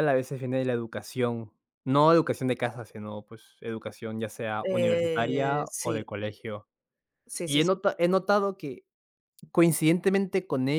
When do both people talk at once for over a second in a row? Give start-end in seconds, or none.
4.7-6.0